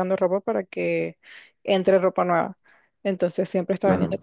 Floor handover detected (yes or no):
no